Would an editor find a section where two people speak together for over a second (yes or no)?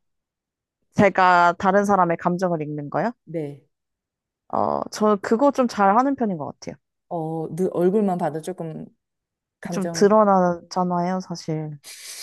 no